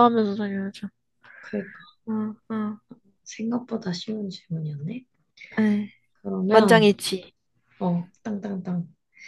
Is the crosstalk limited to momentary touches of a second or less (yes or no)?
yes